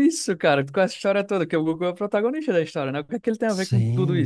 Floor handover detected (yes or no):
yes